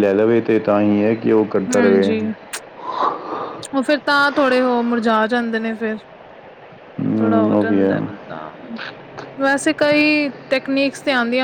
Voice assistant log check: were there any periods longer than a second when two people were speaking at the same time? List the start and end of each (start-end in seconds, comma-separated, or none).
none